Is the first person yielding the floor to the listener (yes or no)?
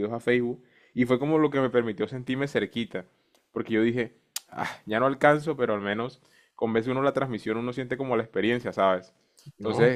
no